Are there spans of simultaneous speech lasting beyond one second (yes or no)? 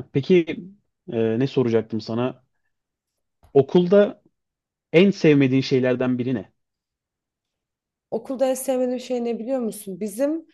no